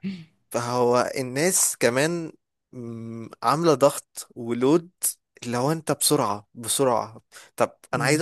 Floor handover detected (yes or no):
no